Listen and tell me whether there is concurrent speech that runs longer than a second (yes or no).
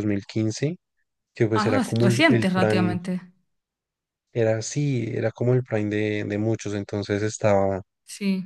yes